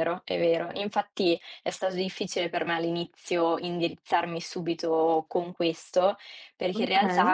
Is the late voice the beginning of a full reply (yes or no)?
no